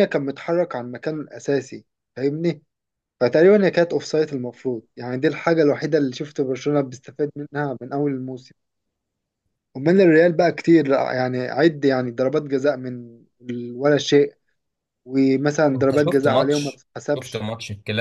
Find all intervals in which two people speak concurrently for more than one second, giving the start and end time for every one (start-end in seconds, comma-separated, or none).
15.8-17.5